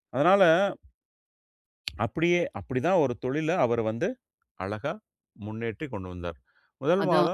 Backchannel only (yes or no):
yes